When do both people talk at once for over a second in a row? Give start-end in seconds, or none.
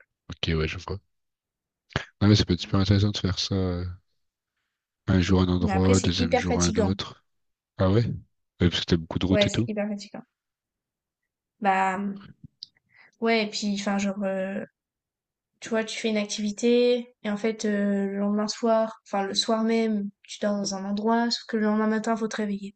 5.6-6.9